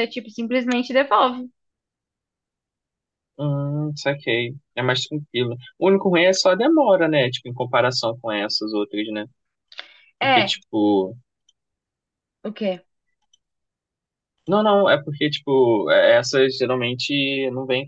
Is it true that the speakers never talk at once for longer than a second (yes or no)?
yes